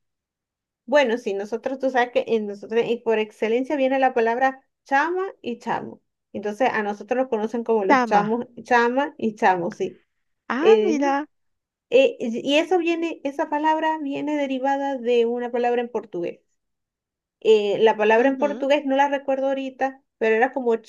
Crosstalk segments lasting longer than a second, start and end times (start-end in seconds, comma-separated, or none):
none